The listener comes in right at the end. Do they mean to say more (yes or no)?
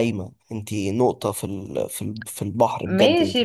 yes